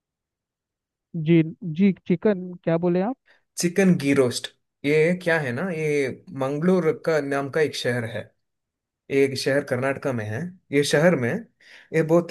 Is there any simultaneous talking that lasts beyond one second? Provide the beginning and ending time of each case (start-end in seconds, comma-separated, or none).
none